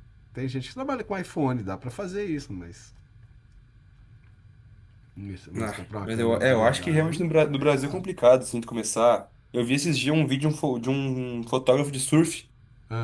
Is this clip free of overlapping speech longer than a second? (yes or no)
no